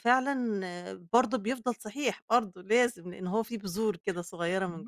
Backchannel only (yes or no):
no